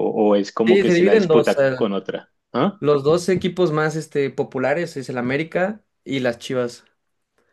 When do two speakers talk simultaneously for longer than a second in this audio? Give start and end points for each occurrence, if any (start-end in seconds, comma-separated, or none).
0.7-1.9